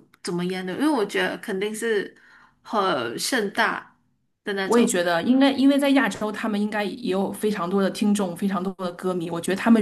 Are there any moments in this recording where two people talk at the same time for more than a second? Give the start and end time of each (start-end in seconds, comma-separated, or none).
none